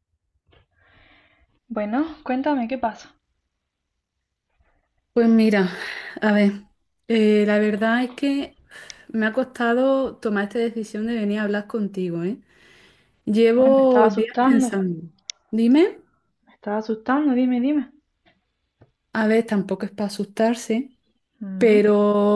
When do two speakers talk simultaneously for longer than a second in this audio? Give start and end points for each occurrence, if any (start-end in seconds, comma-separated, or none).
13.6-14.9